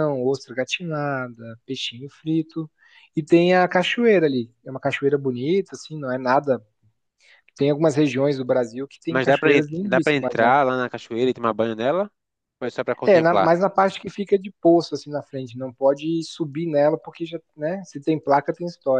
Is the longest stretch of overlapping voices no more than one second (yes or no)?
no